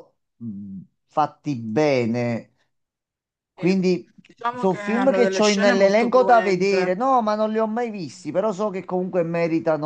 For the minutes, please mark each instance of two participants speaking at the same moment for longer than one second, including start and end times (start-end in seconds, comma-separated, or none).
4.5-6.9